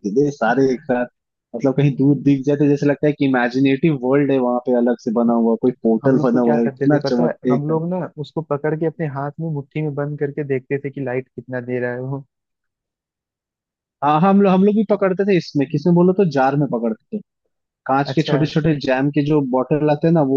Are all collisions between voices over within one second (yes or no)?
no